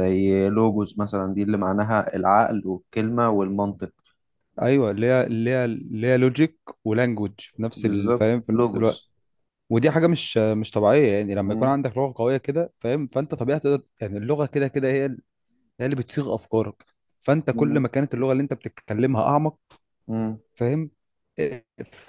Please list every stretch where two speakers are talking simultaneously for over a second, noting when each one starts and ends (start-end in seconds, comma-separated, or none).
7.8-9.0